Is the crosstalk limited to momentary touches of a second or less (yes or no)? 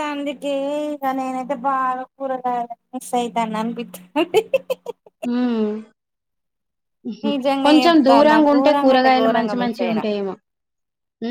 no